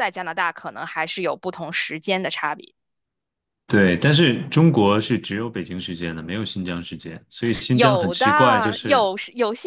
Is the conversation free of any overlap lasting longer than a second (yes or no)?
no